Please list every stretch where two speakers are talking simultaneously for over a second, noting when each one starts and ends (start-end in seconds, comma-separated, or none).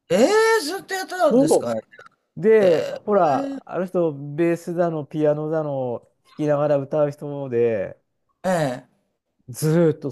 none